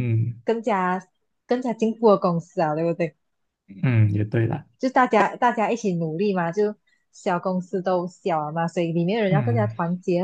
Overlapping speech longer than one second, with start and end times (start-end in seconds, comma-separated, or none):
none